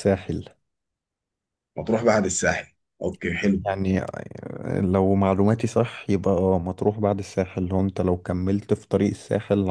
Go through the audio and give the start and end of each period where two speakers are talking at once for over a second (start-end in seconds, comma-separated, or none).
none